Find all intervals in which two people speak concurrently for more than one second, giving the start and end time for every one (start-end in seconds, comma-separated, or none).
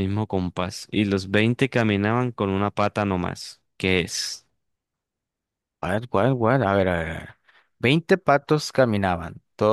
none